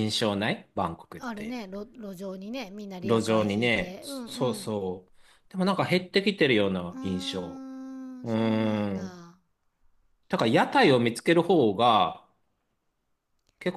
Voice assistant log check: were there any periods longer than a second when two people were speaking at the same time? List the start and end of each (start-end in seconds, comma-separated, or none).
3.0-4.7